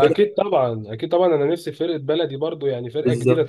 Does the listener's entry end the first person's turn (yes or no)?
no